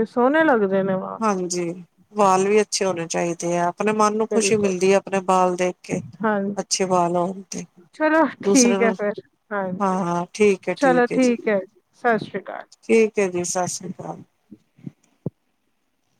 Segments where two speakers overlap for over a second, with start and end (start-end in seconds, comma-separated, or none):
none